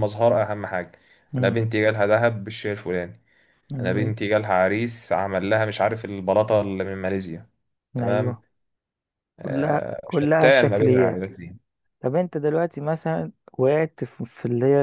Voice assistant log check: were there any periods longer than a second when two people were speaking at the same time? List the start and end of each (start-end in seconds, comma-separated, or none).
9.4-11.2